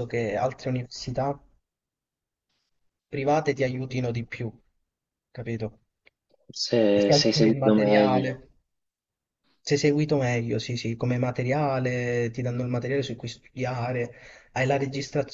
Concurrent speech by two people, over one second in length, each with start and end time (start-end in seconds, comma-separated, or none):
6.9-8.4